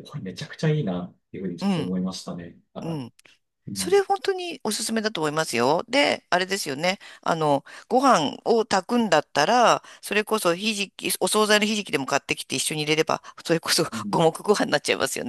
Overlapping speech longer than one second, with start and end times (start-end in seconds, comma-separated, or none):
none